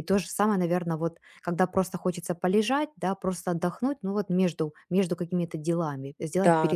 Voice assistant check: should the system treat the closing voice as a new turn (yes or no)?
yes